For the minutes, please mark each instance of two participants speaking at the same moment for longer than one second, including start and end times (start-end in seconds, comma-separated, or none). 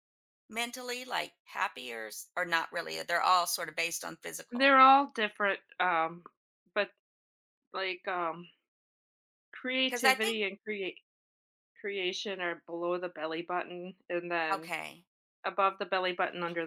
none